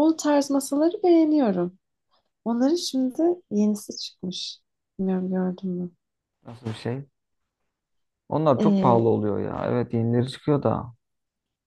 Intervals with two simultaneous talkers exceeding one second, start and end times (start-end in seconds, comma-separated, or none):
none